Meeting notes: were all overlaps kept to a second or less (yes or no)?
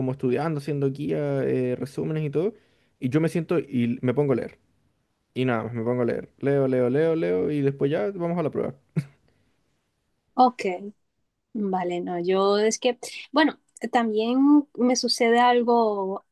yes